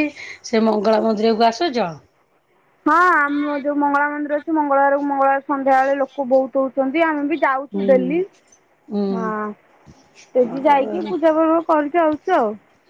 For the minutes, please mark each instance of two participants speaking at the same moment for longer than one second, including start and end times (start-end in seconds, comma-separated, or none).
none